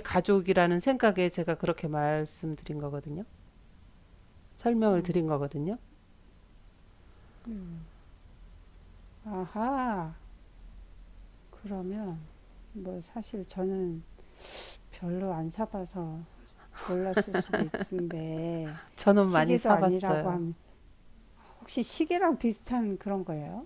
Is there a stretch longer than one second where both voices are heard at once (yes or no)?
yes